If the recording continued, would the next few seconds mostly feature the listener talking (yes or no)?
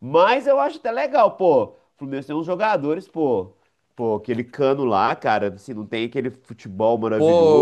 yes